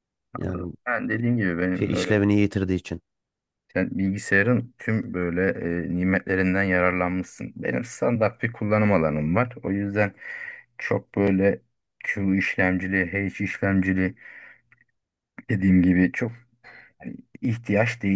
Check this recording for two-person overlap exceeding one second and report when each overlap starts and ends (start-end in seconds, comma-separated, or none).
none